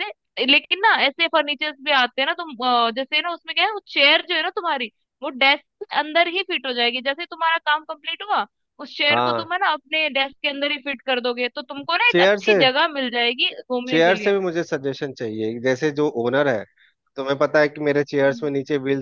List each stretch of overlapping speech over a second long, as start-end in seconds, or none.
none